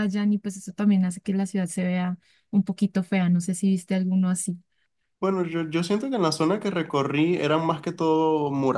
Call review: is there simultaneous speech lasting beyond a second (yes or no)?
no